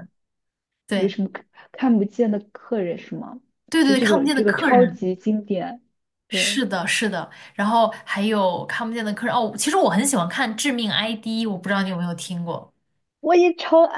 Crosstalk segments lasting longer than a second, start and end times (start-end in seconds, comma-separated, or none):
3.8-5.0